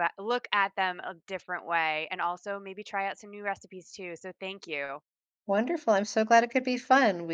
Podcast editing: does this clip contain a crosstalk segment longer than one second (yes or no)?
no